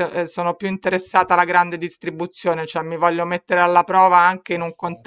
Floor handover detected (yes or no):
no